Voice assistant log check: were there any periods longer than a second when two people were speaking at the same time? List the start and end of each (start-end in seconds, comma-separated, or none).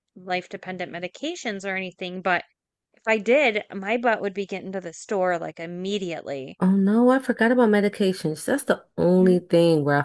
none